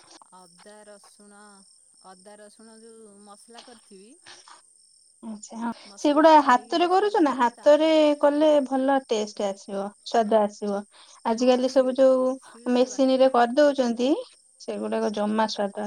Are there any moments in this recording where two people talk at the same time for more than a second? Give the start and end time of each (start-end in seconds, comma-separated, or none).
5.9-7.9